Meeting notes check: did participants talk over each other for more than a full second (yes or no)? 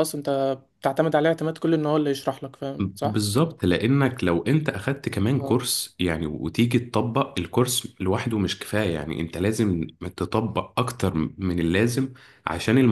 no